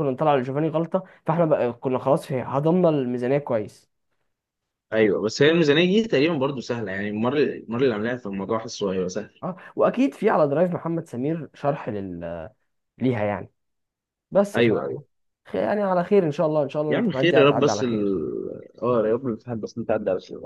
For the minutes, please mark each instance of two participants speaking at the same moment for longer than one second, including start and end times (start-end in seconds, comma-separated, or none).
16.9-18.2